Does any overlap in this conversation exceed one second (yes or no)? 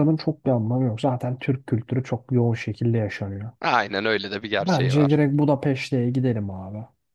no